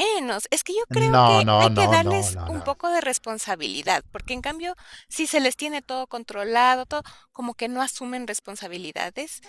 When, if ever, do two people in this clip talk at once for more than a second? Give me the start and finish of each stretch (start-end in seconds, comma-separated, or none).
0.9-2.7